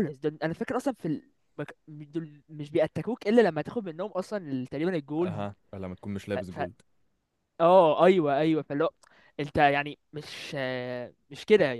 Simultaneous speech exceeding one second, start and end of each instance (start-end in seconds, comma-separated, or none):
none